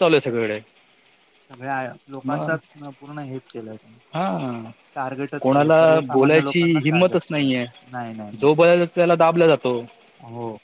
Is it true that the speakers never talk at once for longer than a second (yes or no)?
no